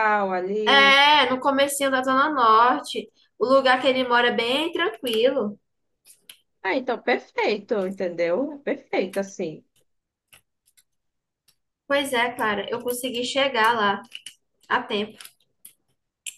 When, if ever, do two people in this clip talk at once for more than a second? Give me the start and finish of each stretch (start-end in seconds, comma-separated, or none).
none